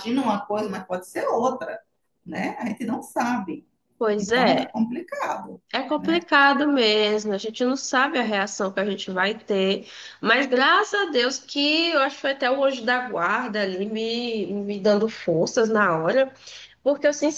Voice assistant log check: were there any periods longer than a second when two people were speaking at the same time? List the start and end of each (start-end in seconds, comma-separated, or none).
none